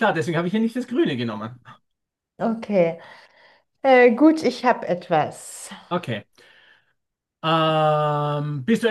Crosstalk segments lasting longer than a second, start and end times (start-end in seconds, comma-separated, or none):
none